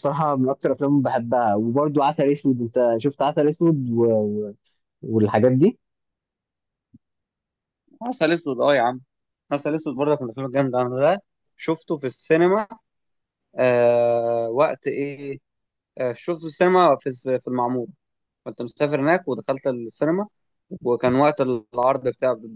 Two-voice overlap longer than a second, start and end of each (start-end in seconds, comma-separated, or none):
none